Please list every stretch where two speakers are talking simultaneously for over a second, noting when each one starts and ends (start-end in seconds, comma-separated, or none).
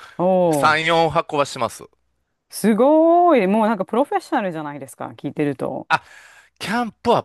none